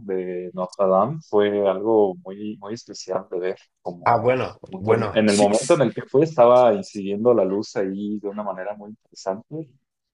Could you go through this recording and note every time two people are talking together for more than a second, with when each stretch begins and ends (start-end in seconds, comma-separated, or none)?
4.0-5.8